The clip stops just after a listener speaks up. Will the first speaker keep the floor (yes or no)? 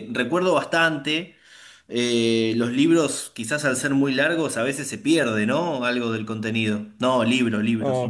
no